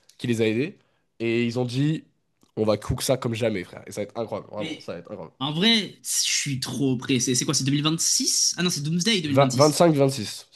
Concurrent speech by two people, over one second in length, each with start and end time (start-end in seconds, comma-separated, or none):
none